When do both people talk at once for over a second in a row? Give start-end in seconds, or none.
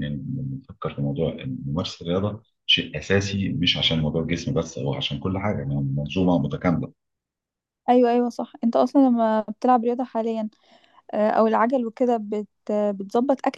none